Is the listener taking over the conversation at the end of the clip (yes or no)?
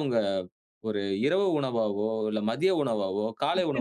yes